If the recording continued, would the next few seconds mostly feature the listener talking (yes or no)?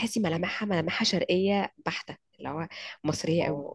no